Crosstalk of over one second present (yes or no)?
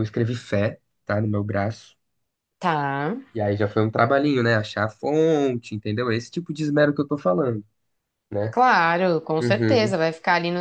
no